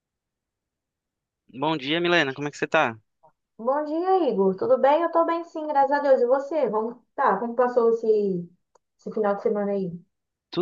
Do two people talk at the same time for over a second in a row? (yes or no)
no